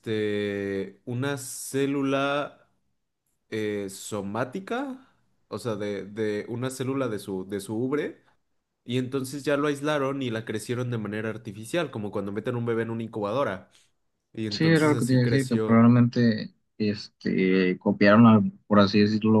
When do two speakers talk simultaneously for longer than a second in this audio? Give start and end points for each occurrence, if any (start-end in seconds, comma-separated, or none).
14.5-15.9